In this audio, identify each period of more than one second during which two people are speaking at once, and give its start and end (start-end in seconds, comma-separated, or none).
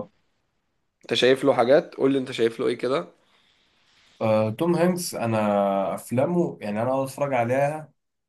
none